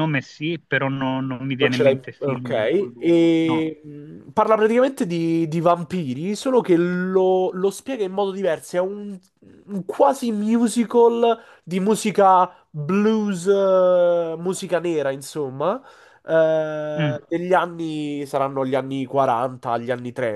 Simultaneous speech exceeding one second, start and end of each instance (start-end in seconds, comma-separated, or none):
1.6-3.7